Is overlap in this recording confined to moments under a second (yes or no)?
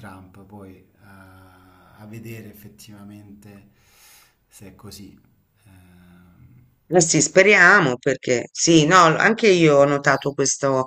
yes